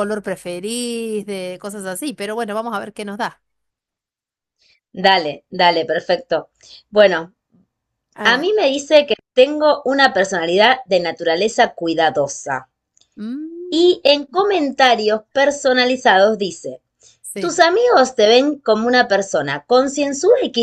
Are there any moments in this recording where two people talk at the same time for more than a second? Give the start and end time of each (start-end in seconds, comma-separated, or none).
none